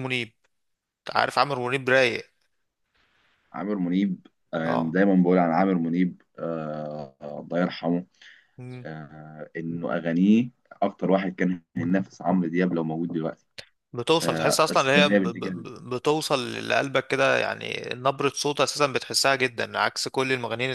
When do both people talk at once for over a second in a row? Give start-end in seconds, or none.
14.2-15.7